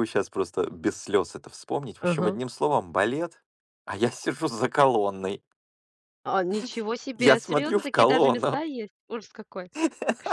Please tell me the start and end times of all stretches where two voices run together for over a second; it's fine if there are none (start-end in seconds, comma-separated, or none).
7.2-8.6